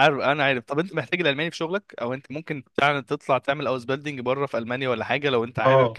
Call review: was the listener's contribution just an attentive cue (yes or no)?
no